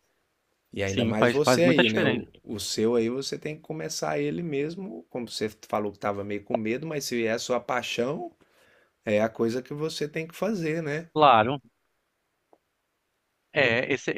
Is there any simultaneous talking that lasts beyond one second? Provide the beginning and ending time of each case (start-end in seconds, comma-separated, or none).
0.8-2.3